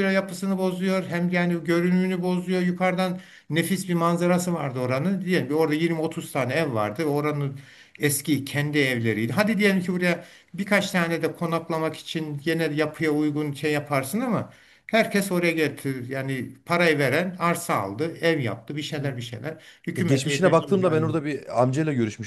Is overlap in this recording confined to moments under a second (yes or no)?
no